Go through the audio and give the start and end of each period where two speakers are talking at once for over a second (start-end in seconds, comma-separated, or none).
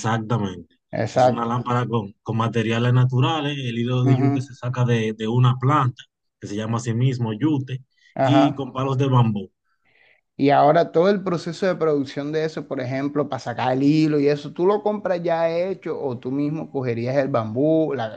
none